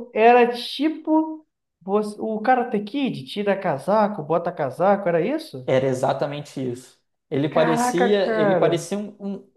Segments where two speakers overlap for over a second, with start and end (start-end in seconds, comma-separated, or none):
7.5-8.8